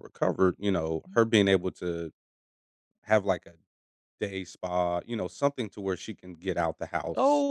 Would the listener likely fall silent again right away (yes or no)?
no